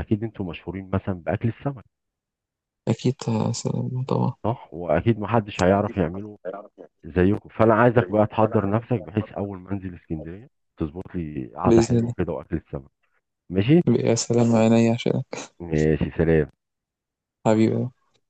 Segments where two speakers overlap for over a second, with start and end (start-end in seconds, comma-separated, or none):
none